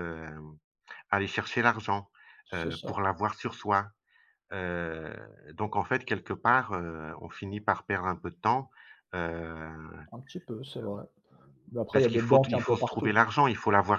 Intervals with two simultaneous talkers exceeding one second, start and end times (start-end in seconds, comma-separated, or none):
11.9-13.1